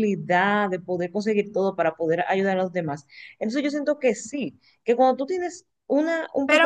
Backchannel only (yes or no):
no